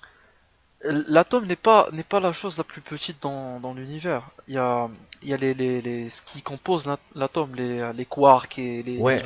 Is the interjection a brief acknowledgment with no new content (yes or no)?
no